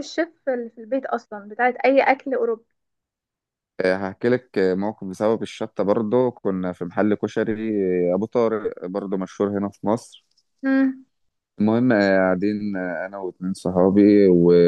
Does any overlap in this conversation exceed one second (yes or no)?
no